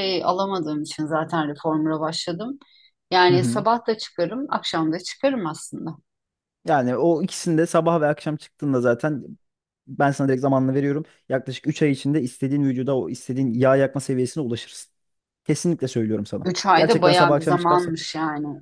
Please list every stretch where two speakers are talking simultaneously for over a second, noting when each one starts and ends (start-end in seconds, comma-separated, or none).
16.4-17.9